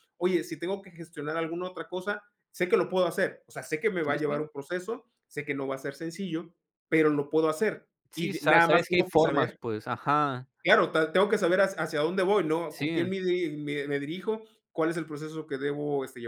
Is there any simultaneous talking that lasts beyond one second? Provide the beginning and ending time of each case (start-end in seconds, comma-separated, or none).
8.1-9.6